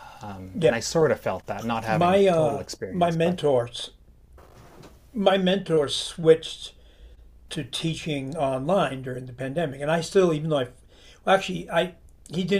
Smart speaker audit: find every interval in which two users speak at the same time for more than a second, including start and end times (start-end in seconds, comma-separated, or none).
1.9-3.4